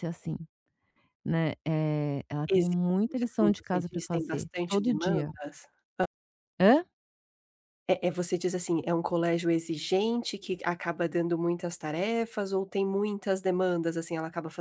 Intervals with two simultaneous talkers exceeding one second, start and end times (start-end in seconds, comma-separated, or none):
2.5-5.3